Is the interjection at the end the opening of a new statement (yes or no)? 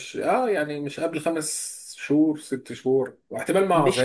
yes